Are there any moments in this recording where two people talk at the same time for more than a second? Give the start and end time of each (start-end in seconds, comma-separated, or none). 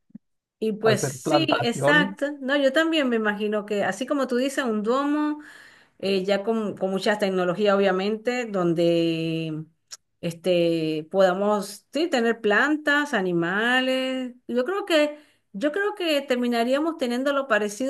0.8-2.3